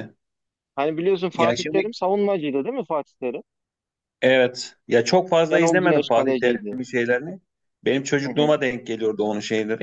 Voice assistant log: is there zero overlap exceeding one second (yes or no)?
no